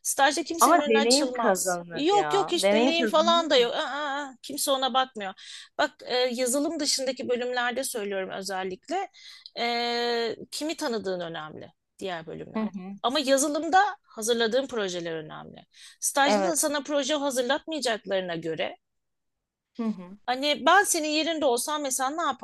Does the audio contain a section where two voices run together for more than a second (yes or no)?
yes